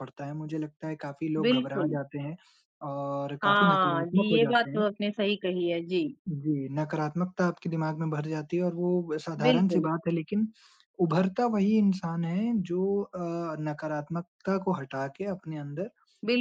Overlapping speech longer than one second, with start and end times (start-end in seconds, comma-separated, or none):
3.4-4.9